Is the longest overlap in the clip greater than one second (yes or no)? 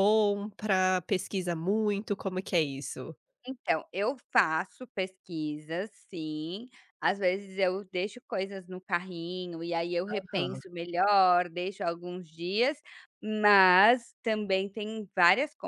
no